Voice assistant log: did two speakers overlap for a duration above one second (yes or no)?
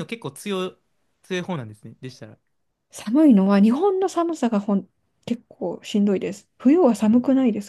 no